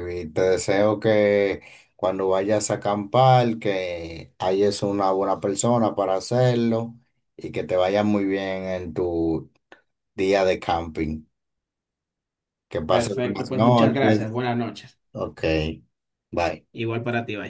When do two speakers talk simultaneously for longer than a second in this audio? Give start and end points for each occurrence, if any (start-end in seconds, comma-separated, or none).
12.9-14.2